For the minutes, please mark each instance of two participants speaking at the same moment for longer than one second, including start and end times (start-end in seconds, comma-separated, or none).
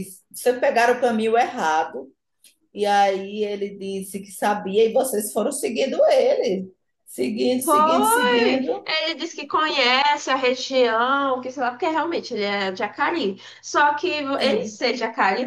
7.6-8.9